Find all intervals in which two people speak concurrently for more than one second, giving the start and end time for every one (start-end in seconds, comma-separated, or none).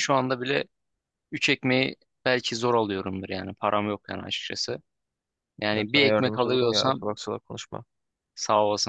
5.7-7.0